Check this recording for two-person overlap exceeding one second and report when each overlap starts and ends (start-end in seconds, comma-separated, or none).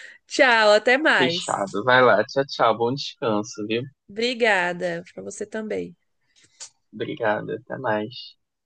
none